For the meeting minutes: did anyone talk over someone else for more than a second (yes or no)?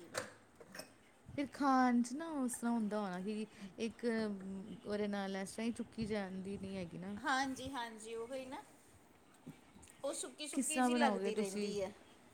yes